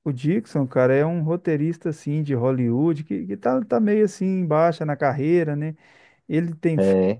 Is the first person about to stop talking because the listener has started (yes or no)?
no